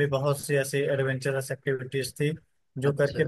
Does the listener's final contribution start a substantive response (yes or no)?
no